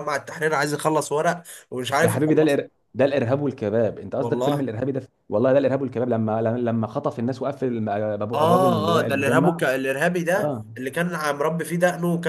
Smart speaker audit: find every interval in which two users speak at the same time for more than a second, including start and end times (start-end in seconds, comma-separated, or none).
8.3-9.6